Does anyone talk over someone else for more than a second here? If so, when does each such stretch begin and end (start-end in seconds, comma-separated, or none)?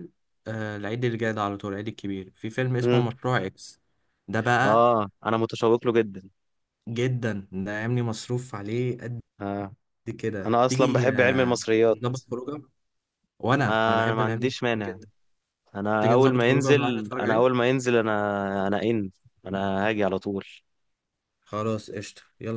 10.4-12.0, 13.7-15.0, 16.0-17.4